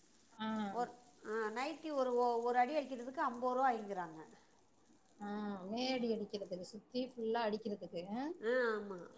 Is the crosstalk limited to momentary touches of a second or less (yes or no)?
yes